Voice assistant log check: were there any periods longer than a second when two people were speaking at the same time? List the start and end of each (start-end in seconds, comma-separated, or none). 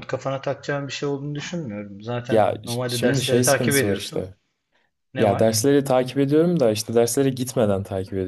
2.3-4.3